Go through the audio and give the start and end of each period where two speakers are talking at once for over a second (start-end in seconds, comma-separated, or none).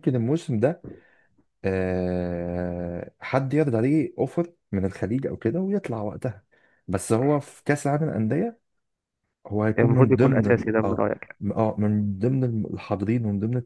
9.8-11.4